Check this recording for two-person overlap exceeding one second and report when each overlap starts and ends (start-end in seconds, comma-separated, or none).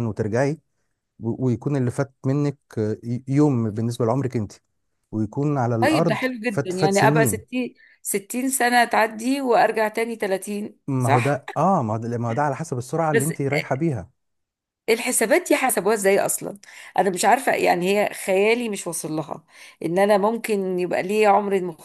5.8-7.5